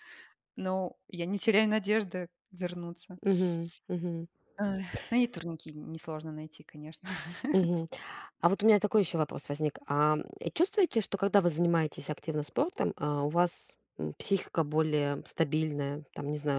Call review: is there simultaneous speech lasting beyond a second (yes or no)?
no